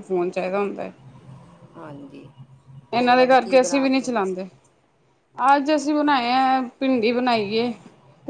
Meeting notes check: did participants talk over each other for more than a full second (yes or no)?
yes